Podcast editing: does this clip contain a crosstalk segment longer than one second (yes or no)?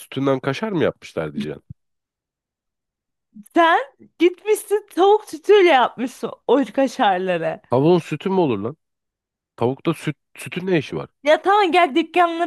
no